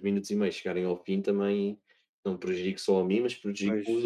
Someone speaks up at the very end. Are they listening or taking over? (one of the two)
listening